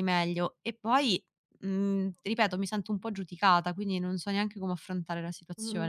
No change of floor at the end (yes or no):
no